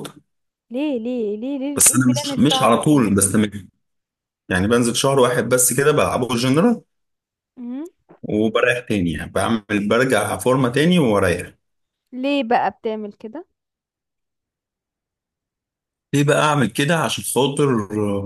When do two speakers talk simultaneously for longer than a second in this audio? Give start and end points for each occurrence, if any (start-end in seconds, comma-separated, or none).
1.8-3.0